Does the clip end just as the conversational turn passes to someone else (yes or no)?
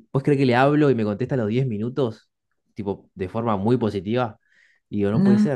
no